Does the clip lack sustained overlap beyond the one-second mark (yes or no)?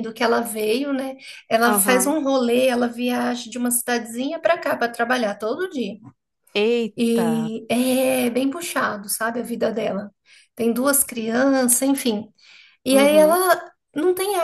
yes